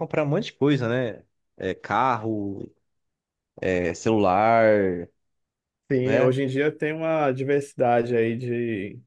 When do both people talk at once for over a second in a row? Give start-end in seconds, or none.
none